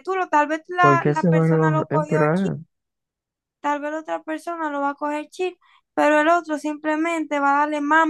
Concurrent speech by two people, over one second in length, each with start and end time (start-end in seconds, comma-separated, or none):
0.8-2.2